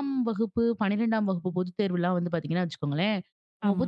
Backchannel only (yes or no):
yes